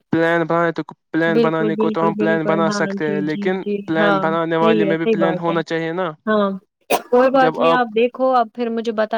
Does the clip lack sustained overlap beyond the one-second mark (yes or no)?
no